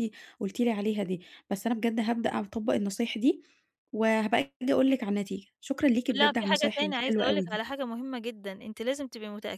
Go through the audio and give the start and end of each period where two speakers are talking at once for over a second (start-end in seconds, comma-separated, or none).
6.1-7.6